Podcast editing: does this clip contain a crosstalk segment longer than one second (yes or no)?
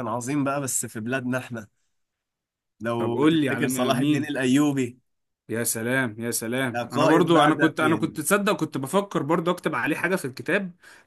yes